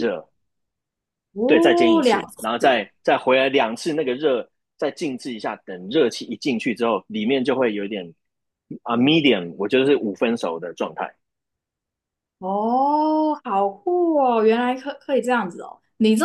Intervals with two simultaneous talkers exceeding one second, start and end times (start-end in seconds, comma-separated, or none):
1.5-2.8